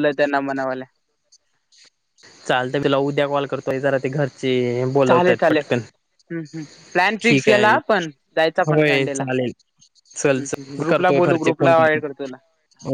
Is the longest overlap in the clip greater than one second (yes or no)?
yes